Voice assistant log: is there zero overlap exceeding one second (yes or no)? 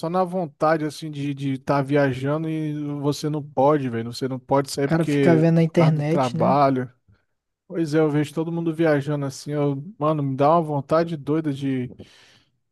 no